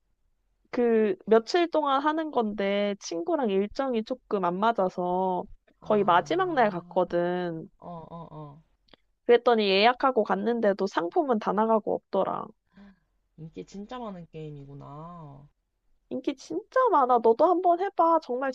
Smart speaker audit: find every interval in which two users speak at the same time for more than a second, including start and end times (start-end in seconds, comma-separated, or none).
5.8-7.0